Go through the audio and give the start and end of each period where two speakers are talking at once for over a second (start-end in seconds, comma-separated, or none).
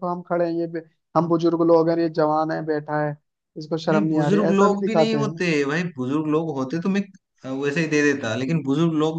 3.9-5.3